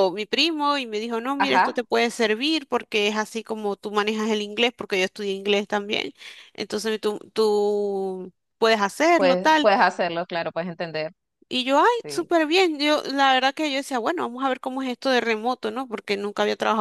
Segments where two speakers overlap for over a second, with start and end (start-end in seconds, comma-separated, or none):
none